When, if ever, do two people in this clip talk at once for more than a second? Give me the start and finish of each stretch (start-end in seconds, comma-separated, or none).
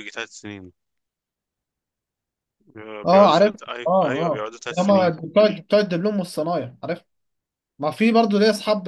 3.1-5.1